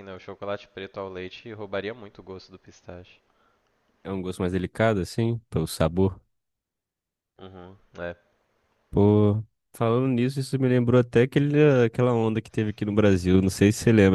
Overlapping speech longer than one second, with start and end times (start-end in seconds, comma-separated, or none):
none